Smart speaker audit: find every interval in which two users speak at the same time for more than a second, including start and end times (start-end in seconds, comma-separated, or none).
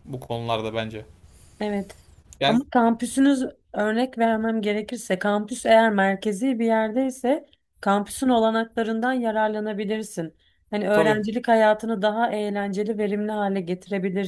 none